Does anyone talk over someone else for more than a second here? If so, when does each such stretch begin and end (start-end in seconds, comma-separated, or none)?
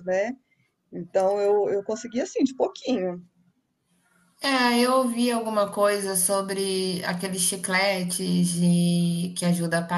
none